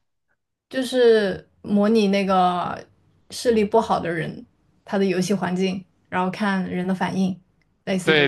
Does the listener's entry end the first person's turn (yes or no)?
yes